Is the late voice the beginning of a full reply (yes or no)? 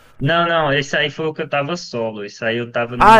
yes